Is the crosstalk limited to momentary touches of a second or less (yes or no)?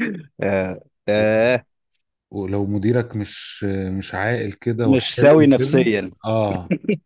no